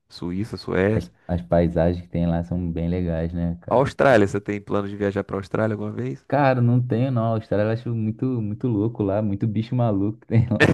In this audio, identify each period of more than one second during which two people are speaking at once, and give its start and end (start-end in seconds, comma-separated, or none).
none